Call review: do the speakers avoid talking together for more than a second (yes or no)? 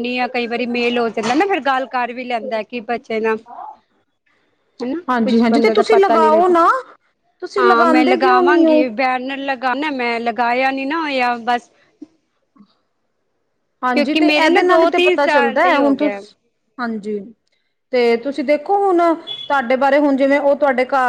no